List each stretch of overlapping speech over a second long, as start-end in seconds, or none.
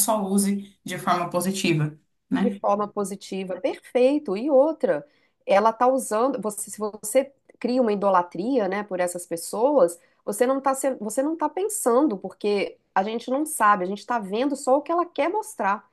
none